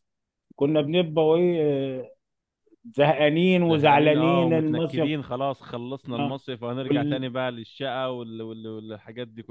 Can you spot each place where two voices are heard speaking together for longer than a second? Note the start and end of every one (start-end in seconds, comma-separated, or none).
3.6-5.1